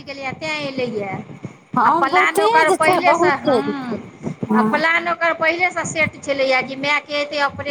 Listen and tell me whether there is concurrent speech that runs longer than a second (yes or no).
yes